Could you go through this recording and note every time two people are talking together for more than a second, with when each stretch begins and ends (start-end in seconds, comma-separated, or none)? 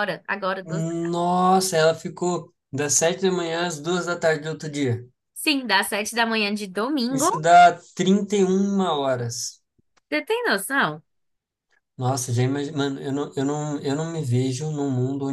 none